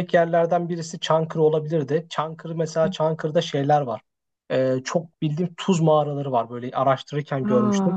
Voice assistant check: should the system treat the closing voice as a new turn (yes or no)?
no